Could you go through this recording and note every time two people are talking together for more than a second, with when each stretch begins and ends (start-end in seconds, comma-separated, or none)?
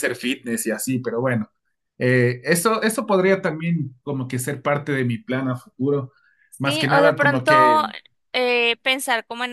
6.6-7.8